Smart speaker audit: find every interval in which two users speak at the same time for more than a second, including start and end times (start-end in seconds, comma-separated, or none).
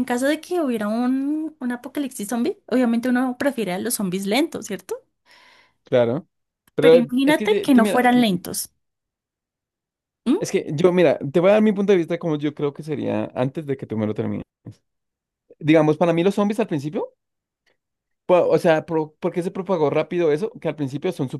6.8-8.2